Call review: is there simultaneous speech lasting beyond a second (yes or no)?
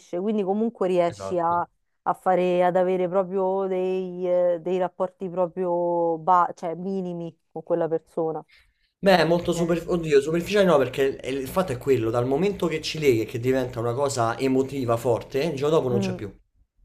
no